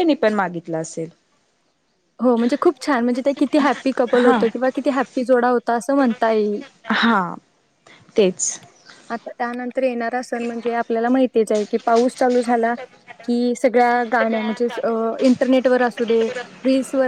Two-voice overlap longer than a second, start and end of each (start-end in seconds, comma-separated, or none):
none